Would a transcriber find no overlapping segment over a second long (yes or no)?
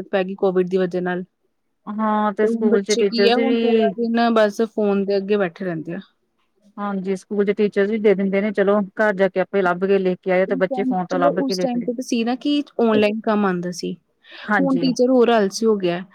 no